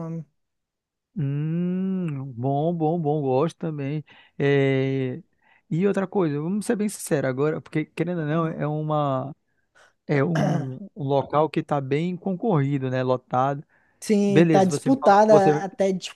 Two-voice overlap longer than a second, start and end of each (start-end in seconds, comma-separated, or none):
14.2-15.7